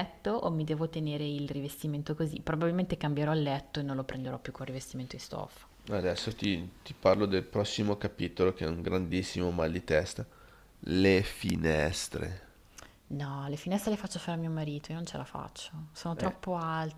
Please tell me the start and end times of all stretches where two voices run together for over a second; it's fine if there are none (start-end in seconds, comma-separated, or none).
none